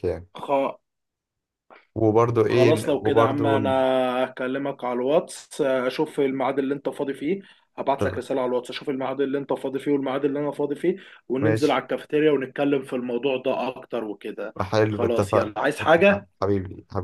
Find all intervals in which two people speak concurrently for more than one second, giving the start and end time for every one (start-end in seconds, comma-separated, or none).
2.5-3.7, 14.6-16.4